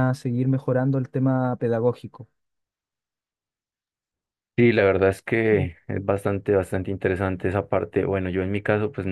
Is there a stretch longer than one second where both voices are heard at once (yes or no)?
no